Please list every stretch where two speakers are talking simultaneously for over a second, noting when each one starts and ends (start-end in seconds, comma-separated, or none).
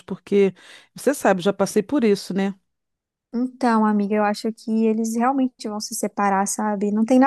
none